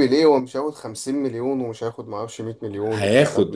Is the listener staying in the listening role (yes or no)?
no